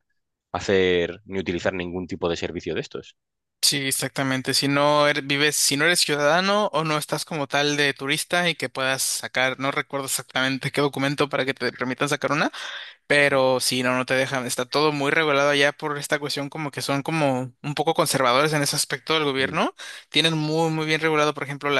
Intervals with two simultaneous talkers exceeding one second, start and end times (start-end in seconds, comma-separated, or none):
none